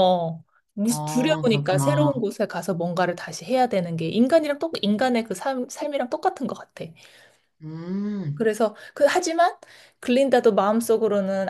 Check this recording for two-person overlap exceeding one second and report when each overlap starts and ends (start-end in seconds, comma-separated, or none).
0.9-2.1